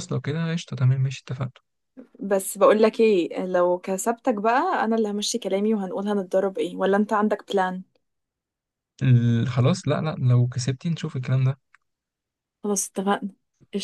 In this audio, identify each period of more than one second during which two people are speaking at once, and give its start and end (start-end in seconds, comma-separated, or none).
none